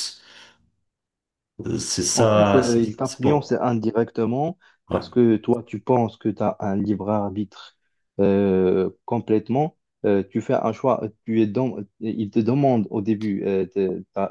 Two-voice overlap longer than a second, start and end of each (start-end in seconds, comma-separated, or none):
2.1-3.5